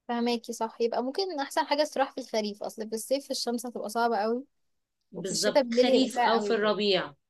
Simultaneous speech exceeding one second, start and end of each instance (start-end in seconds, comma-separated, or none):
5.2-6.8